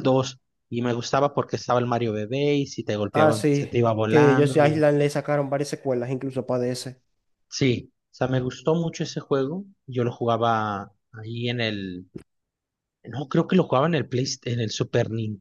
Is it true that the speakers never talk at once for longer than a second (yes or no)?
no